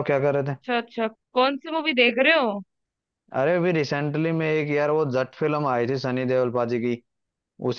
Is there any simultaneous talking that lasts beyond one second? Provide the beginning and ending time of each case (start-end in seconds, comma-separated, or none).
none